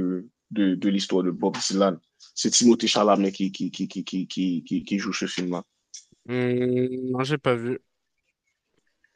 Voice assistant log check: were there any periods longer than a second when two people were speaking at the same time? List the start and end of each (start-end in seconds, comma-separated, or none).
none